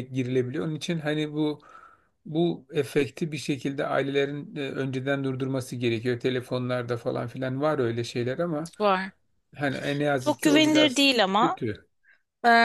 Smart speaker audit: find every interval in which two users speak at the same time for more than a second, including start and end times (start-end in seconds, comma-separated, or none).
10.2-11.6